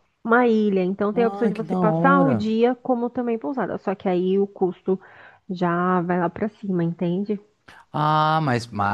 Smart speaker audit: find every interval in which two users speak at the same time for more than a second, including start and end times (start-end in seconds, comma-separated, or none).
1.1-2.5